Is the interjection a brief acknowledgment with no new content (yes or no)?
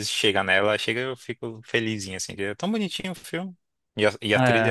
no